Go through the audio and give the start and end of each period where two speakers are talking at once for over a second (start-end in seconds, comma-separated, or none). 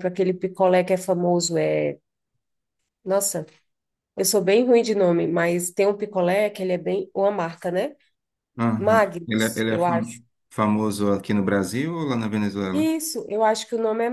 8.8-10.2